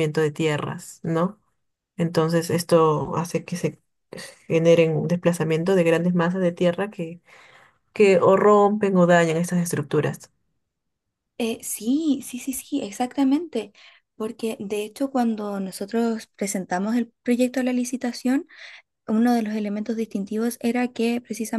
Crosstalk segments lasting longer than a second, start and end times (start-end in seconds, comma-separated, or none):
none